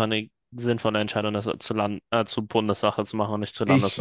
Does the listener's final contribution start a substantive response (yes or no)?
yes